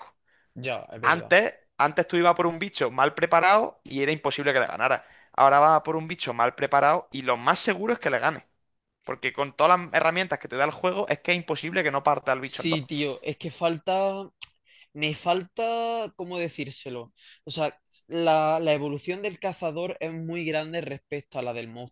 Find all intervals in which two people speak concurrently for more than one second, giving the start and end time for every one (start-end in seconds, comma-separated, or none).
none